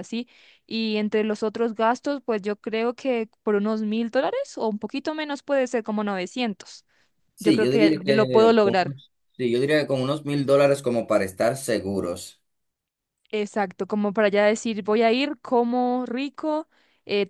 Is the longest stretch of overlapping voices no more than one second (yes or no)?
no